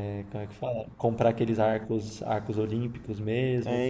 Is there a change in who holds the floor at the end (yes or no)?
yes